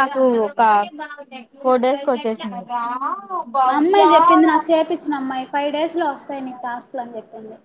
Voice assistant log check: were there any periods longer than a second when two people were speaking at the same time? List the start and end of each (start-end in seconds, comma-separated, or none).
none